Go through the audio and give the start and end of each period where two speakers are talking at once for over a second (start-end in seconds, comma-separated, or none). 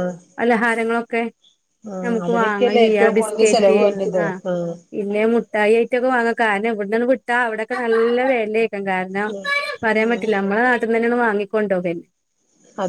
2.0-3.8